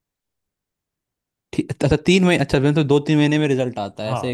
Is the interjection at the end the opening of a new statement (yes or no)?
yes